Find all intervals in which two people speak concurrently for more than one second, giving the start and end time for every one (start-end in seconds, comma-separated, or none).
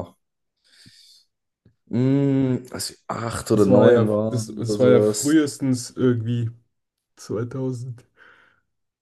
3.5-5.4